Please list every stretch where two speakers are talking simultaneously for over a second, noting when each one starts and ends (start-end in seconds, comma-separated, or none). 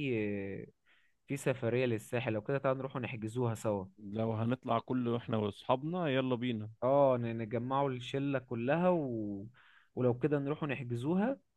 none